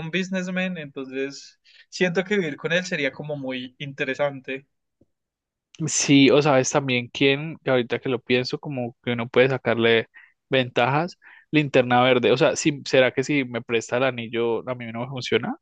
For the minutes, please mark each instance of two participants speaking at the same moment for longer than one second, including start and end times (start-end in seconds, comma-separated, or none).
none